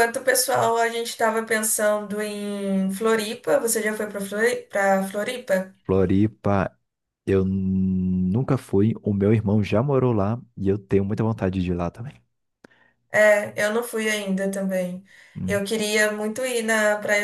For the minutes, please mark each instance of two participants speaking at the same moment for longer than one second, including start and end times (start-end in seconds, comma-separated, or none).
none